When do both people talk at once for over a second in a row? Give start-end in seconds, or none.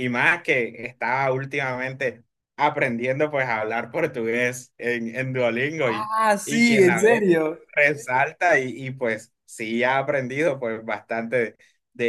5.8-7.3